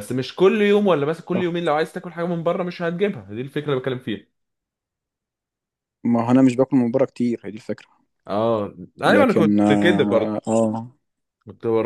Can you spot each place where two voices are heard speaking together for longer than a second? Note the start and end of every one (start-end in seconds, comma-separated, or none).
9.1-10.4